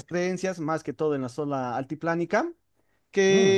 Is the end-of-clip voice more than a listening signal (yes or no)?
no